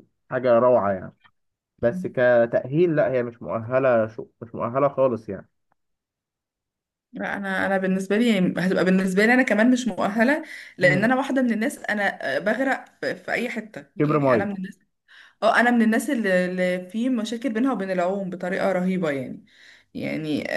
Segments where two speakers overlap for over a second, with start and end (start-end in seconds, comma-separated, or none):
none